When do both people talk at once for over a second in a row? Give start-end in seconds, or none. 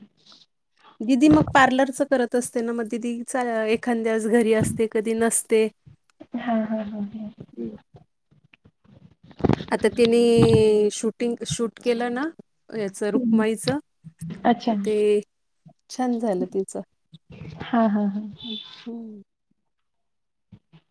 none